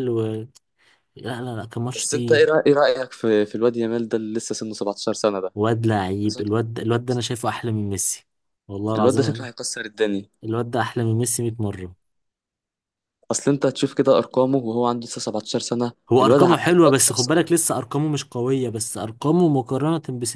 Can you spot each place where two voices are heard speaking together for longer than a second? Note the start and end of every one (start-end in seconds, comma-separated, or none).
16.1-17.5